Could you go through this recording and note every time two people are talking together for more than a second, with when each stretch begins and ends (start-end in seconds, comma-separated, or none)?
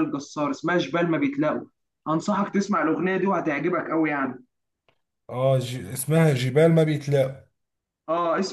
none